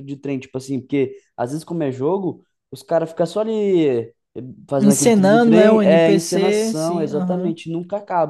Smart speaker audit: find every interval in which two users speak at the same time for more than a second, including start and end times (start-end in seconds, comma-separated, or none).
4.8-7.5